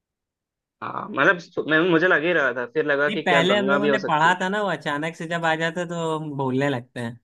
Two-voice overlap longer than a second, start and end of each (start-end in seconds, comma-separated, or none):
3.1-4.5